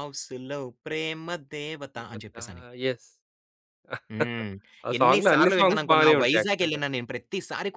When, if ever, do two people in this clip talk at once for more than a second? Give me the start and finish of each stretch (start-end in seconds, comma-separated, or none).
5.0-6.8